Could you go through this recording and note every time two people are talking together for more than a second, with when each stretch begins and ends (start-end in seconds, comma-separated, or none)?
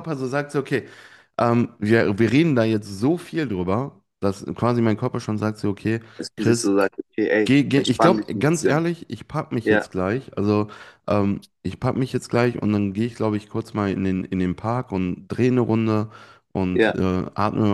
7.4-8.9